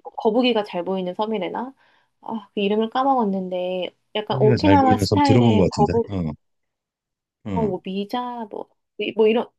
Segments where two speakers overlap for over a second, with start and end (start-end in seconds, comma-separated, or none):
4.3-6.2